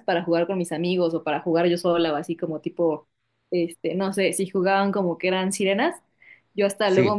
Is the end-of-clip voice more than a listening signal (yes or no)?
no